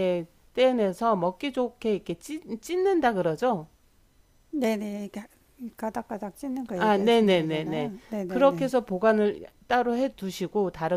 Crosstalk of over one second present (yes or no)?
yes